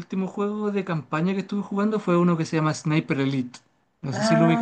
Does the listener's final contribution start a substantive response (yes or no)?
yes